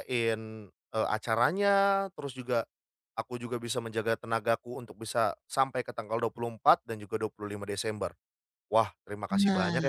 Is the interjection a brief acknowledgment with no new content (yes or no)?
yes